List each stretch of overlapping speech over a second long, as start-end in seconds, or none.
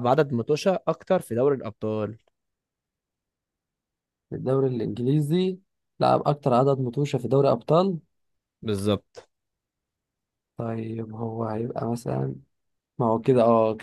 none